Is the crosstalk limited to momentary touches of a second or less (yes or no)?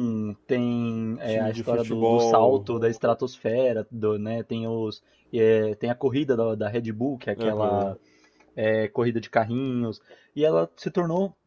no